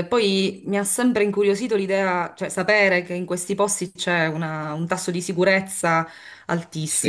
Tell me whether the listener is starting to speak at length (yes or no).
no